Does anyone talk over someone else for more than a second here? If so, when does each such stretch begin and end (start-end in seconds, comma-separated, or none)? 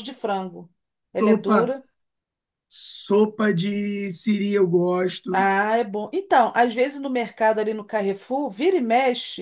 none